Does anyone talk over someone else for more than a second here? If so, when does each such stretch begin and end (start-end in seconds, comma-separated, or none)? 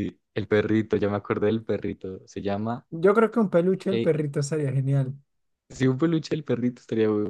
none